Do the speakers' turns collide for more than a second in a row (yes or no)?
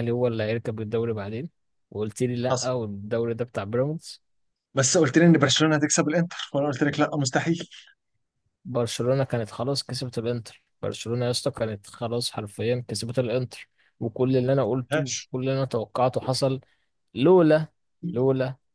no